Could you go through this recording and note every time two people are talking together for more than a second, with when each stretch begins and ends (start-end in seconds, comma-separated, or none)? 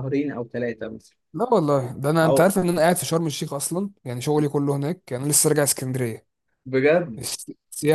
none